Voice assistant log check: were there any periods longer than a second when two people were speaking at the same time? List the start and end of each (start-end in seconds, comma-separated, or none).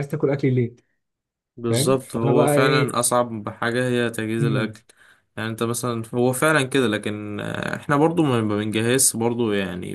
1.7-3.0